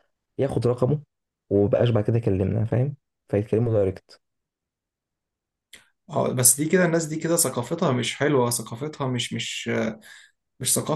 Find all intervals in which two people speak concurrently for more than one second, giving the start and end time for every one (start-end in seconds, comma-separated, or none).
none